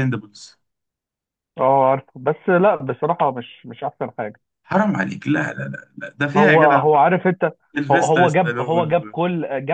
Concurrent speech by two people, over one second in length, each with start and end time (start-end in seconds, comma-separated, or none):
7.9-9.2